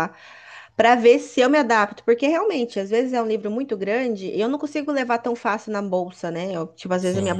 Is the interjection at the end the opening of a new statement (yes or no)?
no